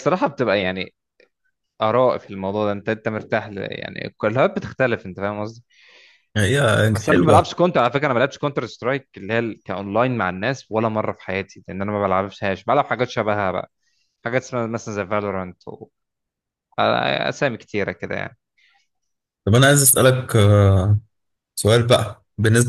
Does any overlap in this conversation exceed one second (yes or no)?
no